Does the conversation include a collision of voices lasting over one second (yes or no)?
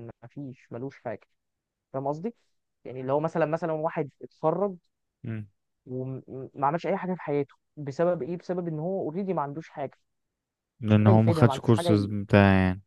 yes